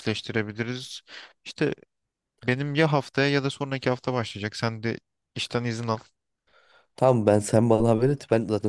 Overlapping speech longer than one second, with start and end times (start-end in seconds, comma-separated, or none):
none